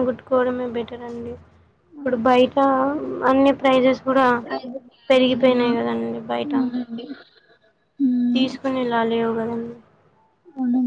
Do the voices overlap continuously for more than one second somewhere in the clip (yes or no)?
yes